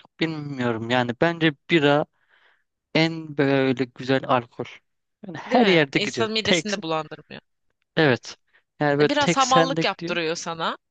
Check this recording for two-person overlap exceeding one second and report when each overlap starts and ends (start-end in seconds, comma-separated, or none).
5.5-6.7, 9.0-10.2